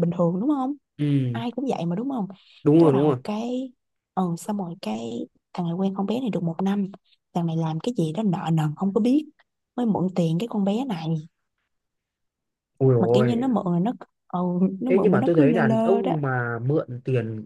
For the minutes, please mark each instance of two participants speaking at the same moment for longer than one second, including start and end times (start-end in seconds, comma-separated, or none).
14.9-16.1